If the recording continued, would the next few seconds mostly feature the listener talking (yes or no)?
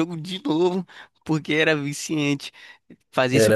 no